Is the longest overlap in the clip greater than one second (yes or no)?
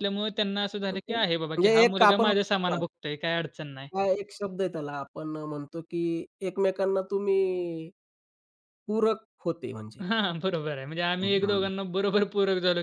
yes